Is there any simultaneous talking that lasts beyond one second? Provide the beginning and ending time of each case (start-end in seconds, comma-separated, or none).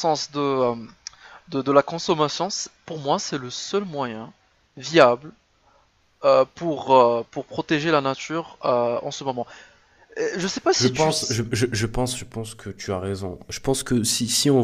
none